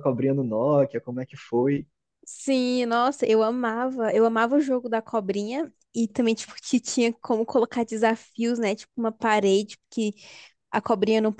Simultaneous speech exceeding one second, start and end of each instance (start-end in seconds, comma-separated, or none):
none